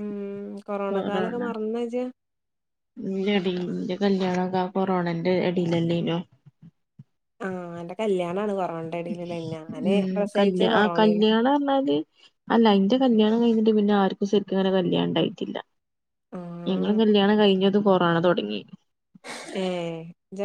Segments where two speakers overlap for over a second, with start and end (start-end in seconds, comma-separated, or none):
none